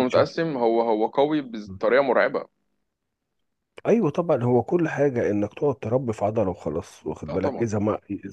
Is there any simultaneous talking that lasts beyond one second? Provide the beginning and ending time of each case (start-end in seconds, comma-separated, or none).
none